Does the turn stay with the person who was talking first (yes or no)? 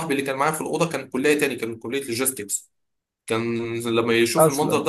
yes